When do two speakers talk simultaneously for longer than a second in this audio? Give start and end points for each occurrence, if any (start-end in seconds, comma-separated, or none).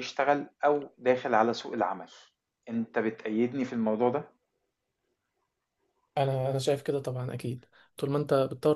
none